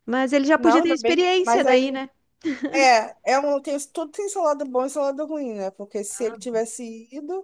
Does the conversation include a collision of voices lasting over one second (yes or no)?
yes